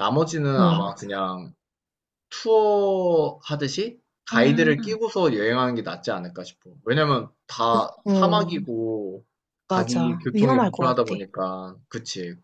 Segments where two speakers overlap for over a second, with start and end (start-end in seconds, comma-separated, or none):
9.7-11.2